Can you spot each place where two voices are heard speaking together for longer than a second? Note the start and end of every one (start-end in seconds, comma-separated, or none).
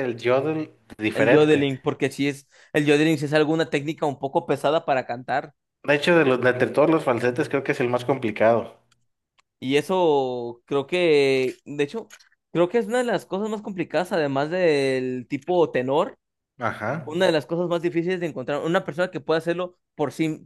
none